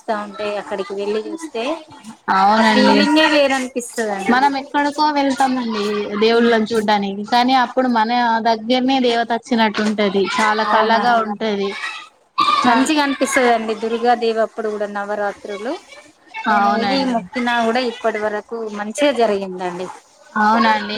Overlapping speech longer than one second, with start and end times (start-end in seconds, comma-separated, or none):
none